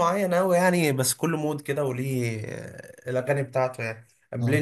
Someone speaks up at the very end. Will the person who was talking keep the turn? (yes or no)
yes